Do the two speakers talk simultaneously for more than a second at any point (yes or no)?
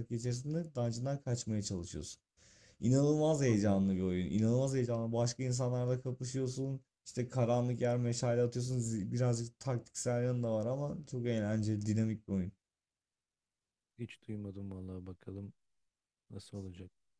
no